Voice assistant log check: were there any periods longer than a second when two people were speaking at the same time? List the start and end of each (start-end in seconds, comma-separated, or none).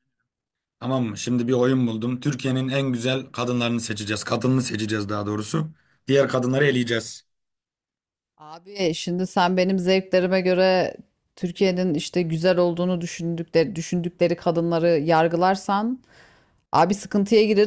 none